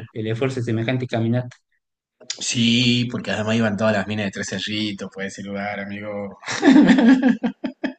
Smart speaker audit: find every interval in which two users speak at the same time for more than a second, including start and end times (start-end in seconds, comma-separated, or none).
none